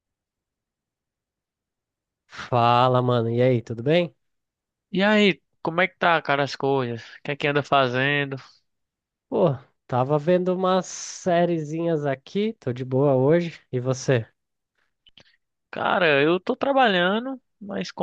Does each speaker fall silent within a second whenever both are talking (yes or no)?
yes